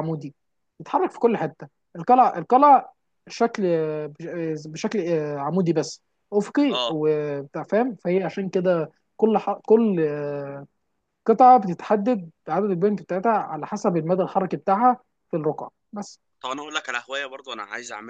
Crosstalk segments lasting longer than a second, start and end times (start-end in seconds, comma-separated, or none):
none